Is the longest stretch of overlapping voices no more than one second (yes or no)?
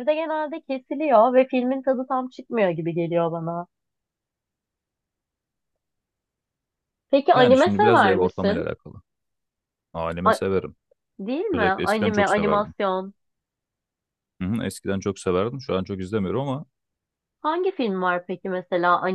no